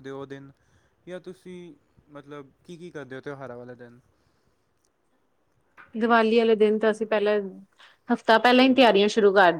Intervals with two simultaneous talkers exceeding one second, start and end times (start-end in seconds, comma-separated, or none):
none